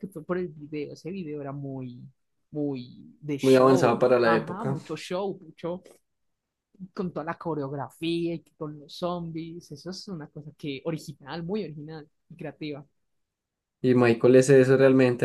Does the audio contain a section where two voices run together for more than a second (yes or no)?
yes